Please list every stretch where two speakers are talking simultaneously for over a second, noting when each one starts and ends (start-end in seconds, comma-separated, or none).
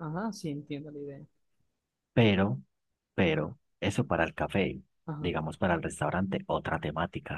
none